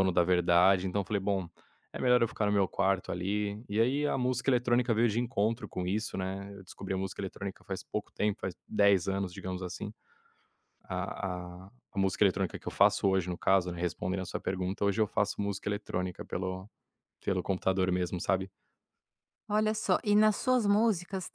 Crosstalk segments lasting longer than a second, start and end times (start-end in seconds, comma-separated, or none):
none